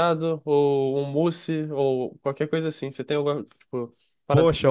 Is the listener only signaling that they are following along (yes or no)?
no